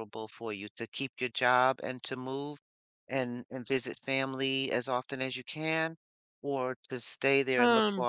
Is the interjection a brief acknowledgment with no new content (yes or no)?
yes